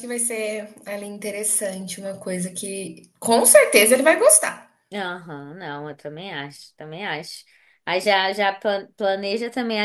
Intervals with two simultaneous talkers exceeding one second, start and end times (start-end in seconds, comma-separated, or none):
none